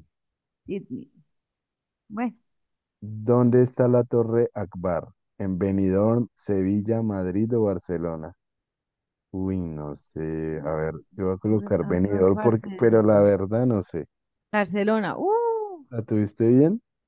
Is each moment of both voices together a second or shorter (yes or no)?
no